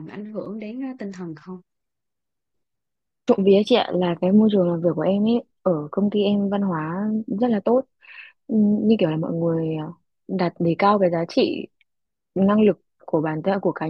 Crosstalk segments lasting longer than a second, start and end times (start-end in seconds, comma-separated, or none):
none